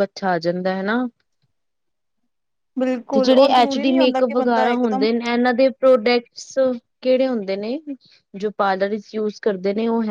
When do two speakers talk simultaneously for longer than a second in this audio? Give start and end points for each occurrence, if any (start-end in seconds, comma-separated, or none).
3.1-5.1